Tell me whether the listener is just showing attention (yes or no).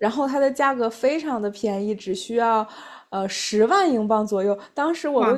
yes